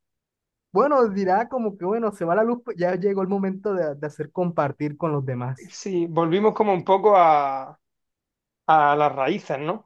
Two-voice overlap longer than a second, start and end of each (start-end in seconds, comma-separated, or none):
none